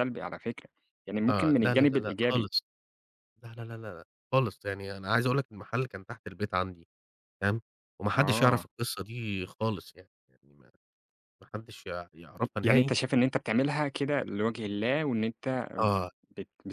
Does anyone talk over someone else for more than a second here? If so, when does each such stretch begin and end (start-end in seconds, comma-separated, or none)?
1.3-2.5